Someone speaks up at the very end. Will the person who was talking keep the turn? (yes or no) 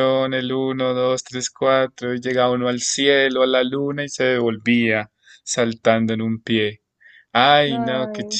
yes